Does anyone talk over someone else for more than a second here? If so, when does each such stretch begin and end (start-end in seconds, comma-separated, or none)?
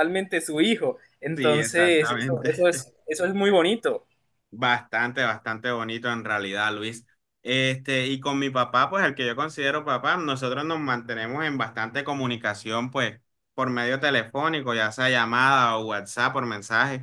1.4-2.7